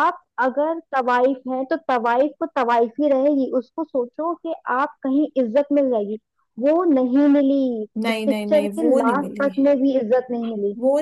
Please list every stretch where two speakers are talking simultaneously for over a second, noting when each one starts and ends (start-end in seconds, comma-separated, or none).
8.1-9.5